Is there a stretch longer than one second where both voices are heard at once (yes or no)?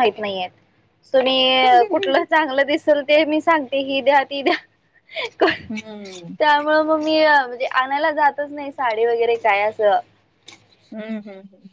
no